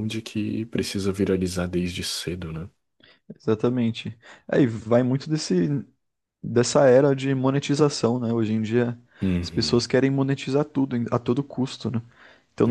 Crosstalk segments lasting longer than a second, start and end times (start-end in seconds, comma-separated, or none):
none